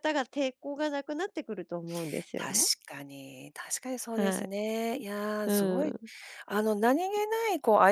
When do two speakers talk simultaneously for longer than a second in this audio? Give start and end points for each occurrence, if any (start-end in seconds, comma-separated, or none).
none